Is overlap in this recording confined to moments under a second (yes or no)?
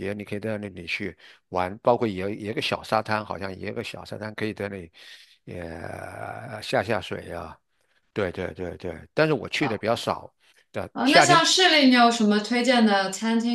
yes